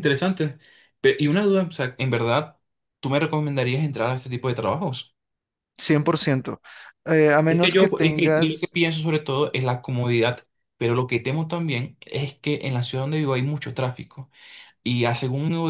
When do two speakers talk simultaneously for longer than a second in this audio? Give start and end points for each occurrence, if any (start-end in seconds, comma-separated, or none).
7.5-8.7